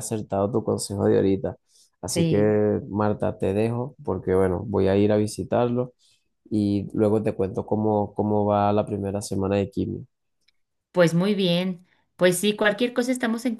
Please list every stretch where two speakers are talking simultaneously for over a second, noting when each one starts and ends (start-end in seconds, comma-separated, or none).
none